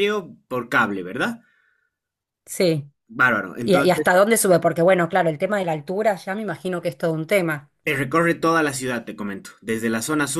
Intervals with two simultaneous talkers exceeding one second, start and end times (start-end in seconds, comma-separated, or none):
none